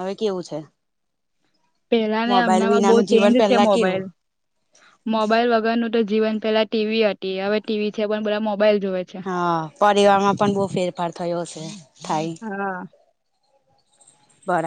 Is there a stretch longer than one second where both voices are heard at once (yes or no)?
yes